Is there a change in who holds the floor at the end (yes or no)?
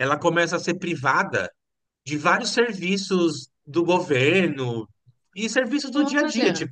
no